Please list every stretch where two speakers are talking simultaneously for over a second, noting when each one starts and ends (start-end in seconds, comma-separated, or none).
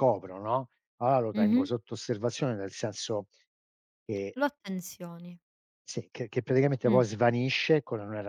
none